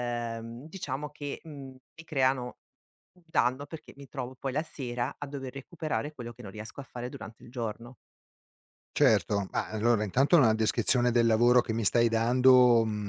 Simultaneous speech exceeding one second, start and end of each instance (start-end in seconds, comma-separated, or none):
none